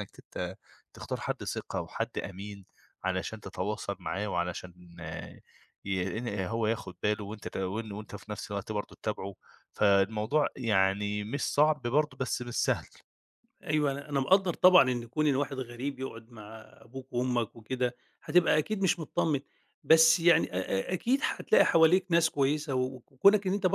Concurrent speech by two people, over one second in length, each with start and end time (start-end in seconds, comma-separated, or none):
none